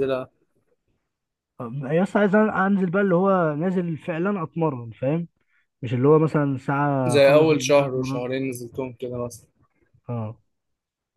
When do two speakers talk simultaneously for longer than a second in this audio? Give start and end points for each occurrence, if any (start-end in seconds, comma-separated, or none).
7.1-8.3